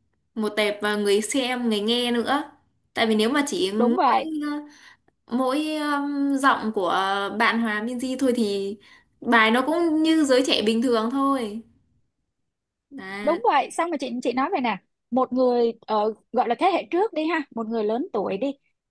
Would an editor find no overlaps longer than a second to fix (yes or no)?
yes